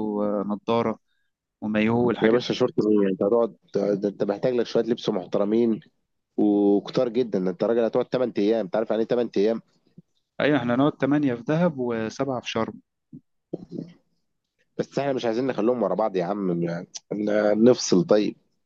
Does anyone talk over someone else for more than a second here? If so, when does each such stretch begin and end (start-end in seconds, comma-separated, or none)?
none